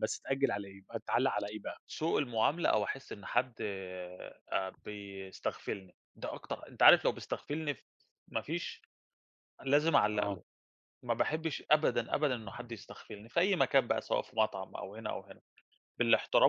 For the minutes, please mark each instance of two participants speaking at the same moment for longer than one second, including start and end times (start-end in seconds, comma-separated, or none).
none